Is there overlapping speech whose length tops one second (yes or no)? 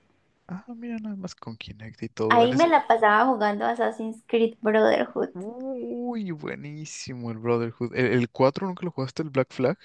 no